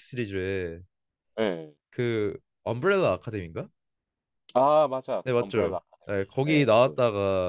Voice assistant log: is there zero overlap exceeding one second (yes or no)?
no